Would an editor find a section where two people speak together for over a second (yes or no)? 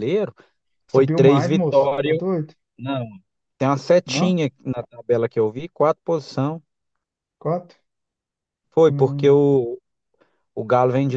yes